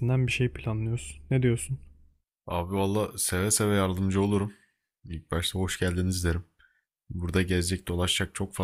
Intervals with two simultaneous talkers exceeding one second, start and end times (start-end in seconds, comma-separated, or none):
none